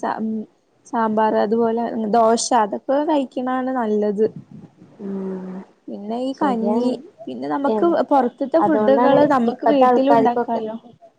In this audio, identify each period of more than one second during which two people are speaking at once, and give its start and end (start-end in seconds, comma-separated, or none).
8.7-10.6